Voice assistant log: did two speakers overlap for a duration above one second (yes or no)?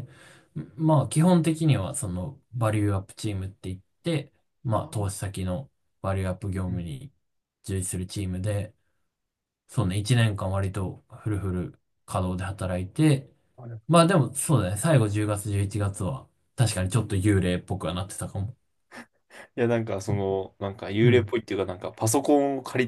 no